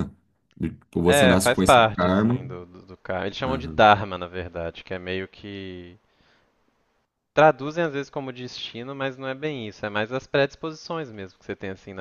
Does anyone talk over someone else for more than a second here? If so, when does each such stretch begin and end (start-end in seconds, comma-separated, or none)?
1.1-2.3